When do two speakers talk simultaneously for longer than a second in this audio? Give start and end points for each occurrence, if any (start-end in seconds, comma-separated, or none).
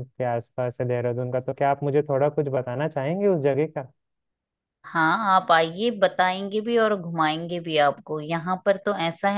none